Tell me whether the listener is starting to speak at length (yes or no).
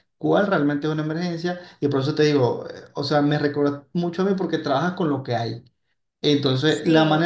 no